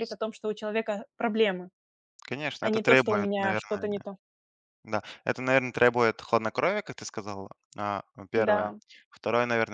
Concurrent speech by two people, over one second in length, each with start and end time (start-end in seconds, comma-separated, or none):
2.6-3.9